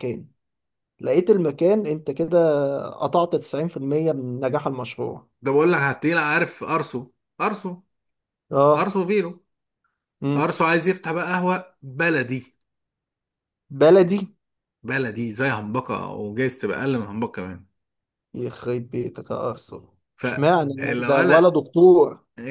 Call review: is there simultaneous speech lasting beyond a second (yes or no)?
yes